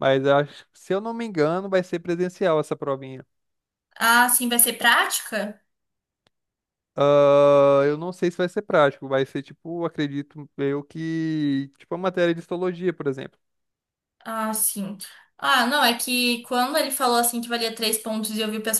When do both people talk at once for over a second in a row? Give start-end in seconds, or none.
none